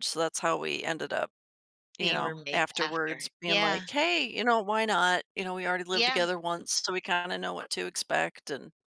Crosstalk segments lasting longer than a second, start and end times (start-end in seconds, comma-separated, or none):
2.0-3.8